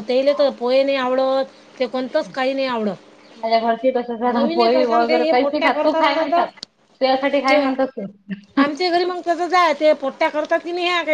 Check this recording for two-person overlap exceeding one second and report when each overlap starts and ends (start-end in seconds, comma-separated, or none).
4.3-6.4